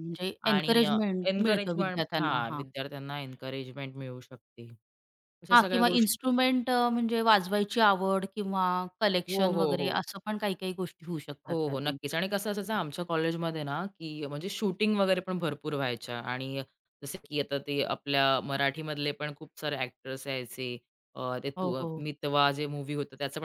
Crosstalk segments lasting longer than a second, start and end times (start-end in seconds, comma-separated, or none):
0.5-2.6